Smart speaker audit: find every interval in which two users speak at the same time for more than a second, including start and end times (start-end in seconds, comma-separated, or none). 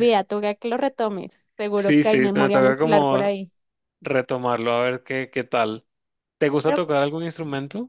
1.8-3.3